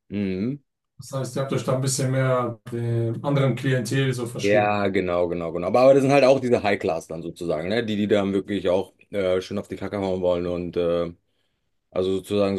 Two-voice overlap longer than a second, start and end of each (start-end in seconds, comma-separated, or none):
none